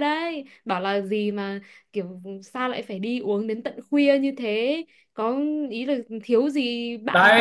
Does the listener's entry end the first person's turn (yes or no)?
yes